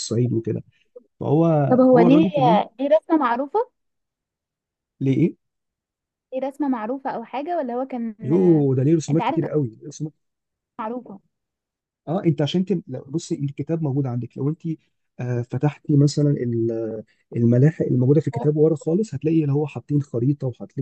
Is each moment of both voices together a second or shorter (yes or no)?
yes